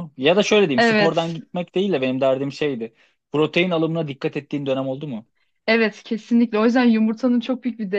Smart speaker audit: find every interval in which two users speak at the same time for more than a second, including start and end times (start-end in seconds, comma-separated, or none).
none